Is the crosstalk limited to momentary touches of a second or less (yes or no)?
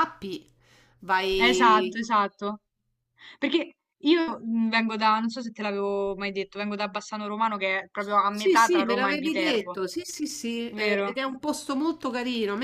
no